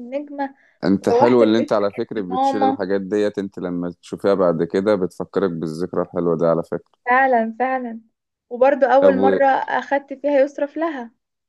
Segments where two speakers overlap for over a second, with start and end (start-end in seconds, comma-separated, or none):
1.1-2.8